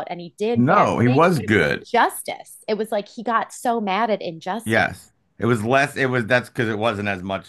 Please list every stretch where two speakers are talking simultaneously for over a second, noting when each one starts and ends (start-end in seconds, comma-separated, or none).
0.6-1.9